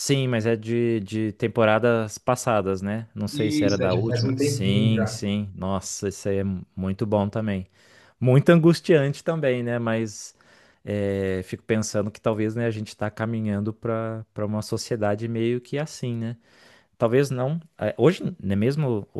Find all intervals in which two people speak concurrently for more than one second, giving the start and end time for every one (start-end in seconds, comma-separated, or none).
3.3-5.2